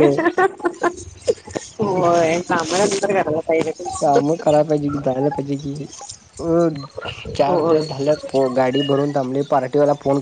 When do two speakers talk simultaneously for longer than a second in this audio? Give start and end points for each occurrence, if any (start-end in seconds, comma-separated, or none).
none